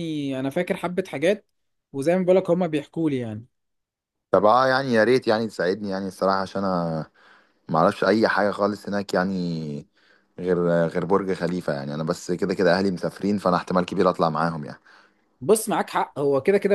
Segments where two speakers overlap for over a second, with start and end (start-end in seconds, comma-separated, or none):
none